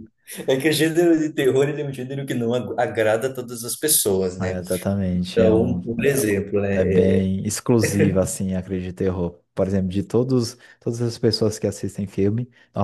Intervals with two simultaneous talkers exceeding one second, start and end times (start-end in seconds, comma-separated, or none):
5.3-7.2